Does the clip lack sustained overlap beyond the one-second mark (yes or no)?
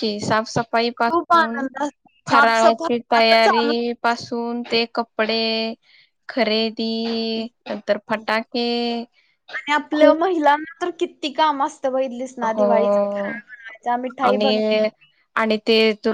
no